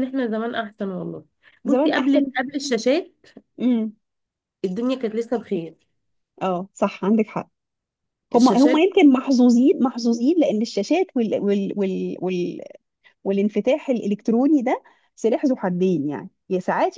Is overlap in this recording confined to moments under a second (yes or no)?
yes